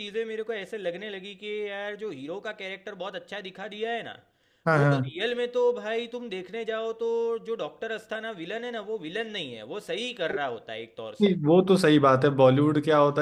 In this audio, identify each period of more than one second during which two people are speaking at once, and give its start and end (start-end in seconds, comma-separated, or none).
none